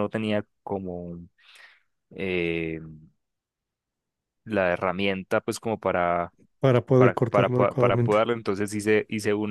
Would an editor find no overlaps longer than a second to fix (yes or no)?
no